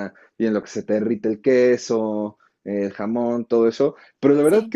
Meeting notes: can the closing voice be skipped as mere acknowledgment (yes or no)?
yes